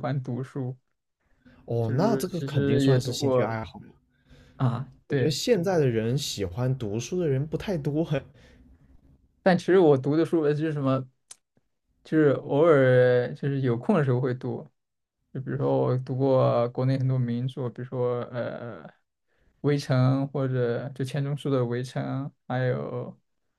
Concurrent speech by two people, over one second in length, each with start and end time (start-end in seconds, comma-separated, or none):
1.8-3.5